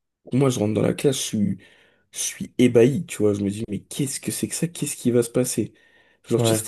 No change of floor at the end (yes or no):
yes